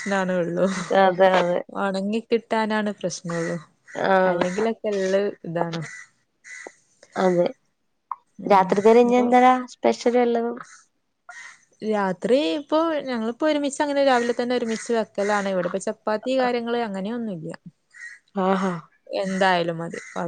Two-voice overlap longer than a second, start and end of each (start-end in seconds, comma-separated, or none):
none